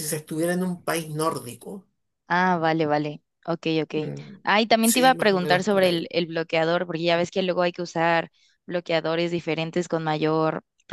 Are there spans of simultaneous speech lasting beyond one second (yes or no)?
yes